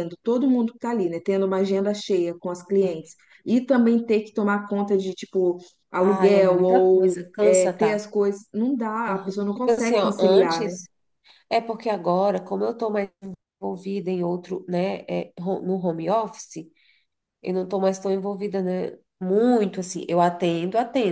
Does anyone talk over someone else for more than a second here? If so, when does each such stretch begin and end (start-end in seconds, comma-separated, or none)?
6.2-7.9, 9.1-10.8